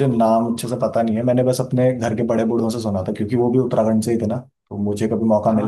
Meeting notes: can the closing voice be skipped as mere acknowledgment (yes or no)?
no